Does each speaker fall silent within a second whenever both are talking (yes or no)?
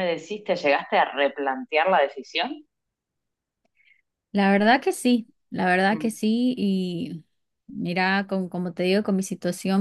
yes